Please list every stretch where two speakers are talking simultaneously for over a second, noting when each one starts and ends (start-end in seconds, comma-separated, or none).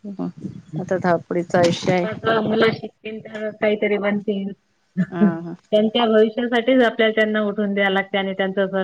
none